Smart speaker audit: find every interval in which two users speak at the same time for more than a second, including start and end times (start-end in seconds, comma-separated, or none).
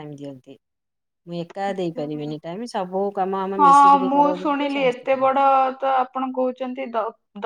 3.6-5.4